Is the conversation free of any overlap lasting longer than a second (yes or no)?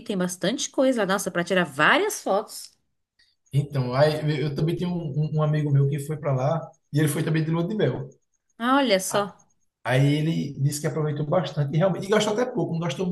yes